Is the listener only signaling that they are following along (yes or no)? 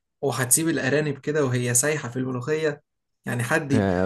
no